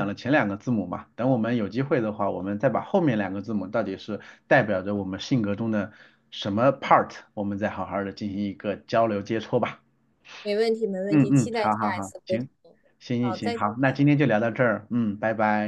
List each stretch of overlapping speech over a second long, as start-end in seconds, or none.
11.1-12.5